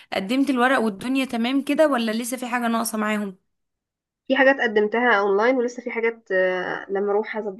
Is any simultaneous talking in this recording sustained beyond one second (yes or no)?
no